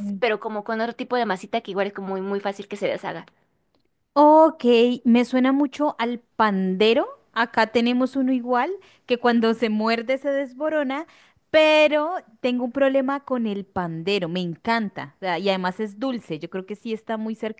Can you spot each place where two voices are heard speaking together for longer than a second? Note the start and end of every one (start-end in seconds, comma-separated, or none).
none